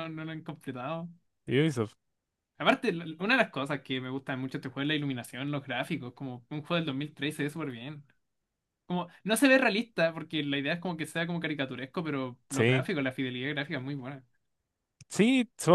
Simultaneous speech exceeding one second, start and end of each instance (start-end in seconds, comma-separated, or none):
none